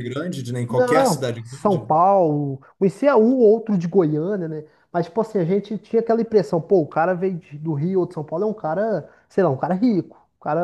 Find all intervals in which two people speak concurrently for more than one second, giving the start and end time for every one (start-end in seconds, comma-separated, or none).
0.7-1.9